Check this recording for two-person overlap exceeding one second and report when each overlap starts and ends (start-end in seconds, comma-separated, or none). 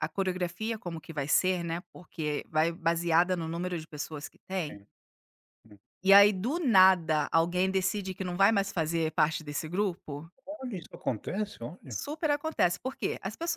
none